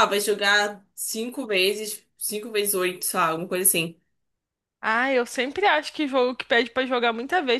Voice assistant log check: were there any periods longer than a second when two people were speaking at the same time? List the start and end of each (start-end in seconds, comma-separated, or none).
none